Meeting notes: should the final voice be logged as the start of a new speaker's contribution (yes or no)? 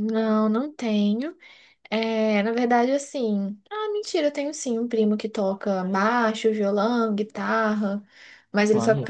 no